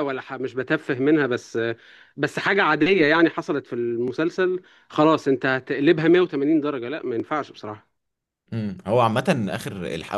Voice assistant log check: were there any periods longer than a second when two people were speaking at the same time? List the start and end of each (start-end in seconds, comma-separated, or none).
none